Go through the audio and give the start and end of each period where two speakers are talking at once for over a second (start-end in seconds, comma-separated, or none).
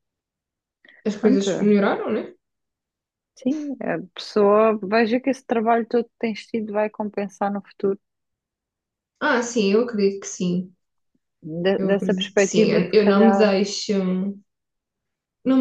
11.8-13.5